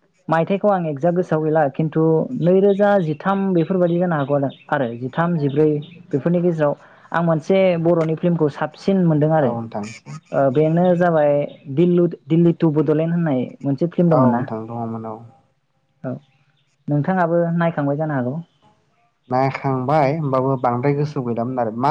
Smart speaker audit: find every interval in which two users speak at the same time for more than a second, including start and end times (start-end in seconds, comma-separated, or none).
none